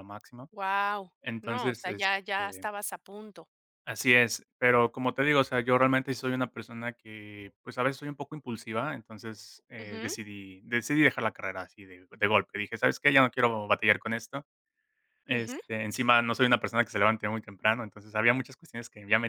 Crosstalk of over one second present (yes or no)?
yes